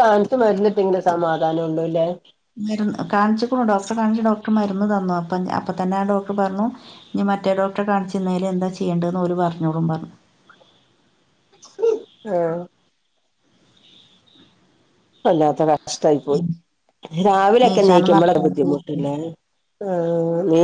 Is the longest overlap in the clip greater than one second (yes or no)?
yes